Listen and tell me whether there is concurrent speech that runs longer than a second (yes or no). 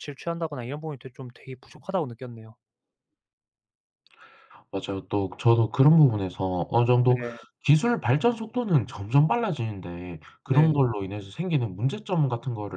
no